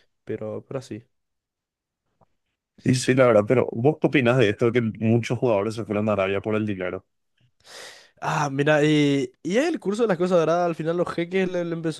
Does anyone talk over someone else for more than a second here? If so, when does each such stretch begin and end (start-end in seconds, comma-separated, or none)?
none